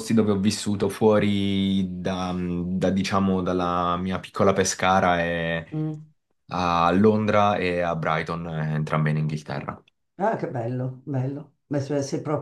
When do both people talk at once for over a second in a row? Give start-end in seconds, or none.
none